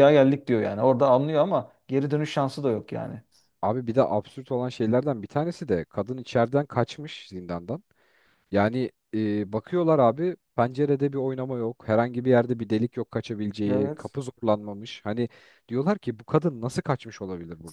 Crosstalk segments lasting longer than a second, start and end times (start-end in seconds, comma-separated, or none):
none